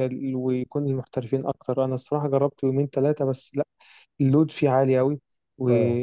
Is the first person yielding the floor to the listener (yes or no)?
no